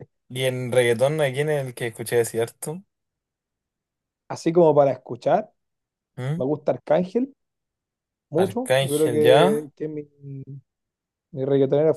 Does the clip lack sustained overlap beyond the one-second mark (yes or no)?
no